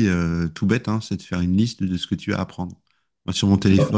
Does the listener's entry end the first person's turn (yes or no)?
no